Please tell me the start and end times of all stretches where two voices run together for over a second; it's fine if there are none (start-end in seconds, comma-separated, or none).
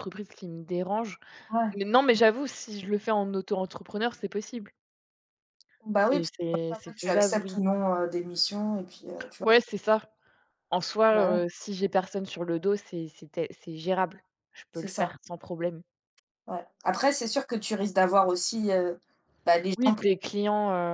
6.0-7.6